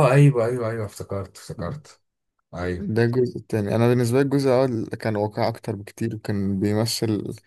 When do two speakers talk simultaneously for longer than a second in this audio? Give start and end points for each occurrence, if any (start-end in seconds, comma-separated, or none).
none